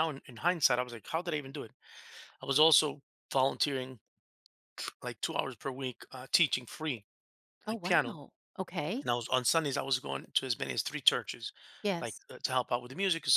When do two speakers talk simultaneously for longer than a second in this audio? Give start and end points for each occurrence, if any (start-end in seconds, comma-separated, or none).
none